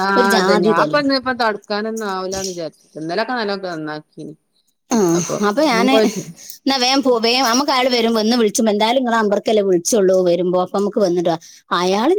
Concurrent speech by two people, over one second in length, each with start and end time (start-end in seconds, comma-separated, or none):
none